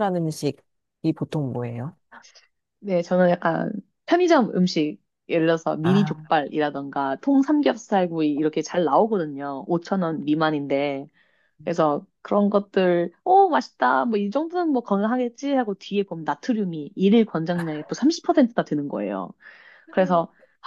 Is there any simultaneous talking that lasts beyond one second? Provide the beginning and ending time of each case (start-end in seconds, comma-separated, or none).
none